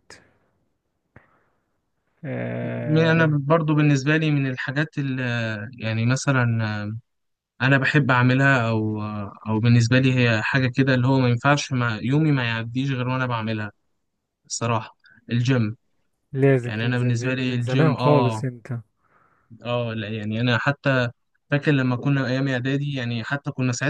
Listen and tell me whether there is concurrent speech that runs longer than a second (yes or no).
yes